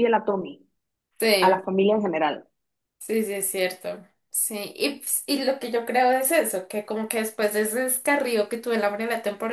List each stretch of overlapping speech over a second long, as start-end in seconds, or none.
none